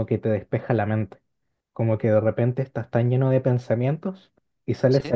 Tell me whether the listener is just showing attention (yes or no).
yes